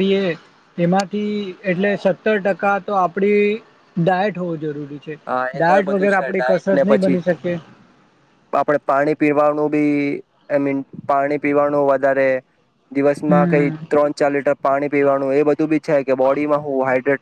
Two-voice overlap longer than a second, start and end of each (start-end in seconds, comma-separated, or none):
5.5-7.2